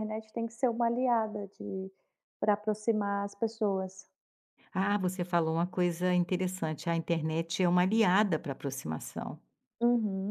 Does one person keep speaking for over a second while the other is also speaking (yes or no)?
no